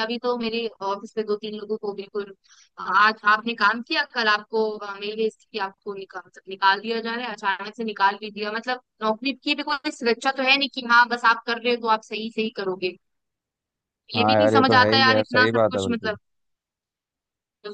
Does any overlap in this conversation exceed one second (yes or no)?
yes